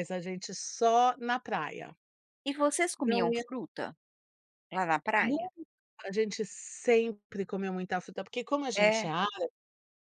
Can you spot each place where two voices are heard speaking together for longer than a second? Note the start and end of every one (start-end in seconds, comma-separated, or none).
none